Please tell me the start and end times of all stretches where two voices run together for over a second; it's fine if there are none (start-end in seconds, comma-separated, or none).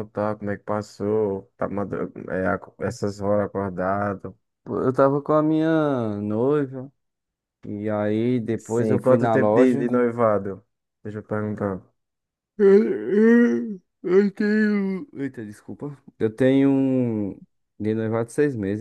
8.6-9.9